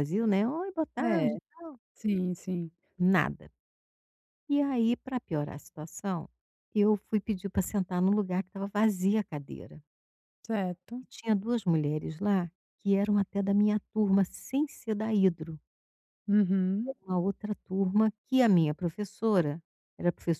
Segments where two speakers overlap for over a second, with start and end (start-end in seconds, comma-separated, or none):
none